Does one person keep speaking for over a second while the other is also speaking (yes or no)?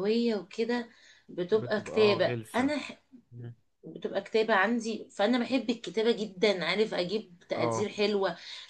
yes